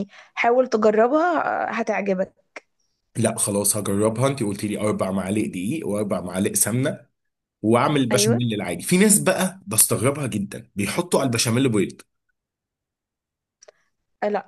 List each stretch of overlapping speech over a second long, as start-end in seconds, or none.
none